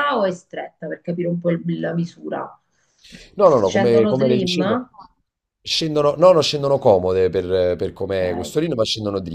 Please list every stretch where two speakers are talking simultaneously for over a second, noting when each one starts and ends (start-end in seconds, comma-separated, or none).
3.4-4.8